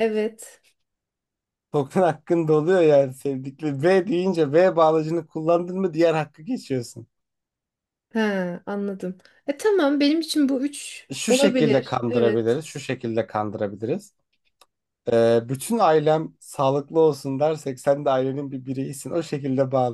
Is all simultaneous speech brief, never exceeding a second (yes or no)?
no